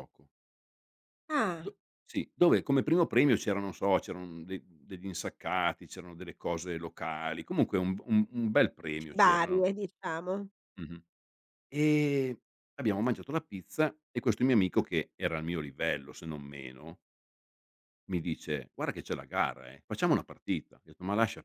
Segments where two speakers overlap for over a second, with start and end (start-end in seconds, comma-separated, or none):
none